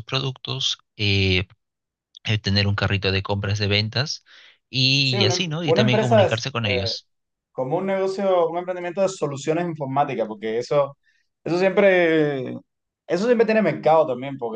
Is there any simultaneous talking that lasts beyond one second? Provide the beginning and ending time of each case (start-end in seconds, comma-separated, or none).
5.0-6.9